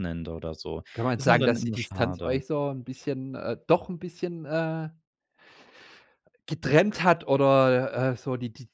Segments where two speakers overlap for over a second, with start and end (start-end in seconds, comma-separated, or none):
0.9-2.4